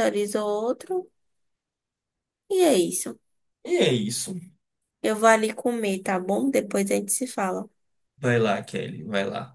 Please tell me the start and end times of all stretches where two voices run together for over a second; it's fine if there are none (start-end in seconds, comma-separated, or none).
none